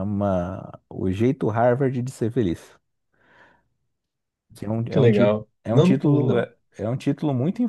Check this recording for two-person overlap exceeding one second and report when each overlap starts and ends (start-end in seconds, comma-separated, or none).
4.9-6.5